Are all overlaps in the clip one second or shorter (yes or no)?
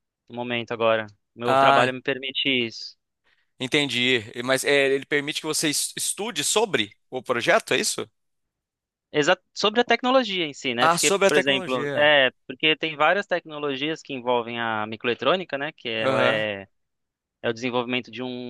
no